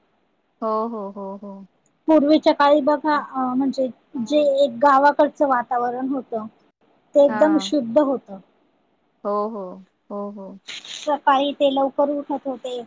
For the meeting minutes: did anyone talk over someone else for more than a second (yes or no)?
no